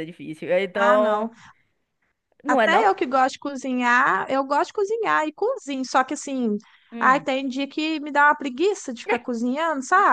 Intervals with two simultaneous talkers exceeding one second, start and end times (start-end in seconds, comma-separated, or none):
none